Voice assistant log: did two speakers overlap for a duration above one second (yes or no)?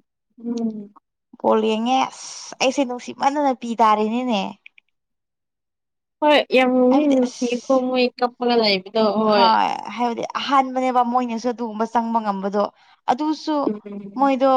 no